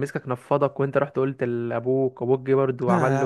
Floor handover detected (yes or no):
yes